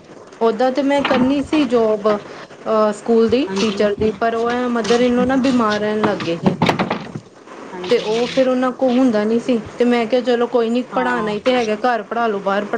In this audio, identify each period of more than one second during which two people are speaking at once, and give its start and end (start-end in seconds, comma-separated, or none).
3.5-5.1